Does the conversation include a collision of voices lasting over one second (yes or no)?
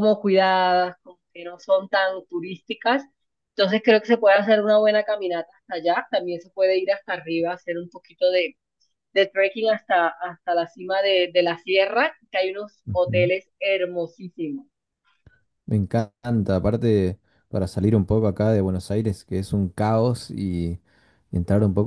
no